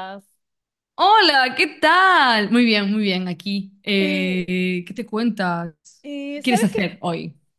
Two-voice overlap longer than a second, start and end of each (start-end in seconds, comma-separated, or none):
none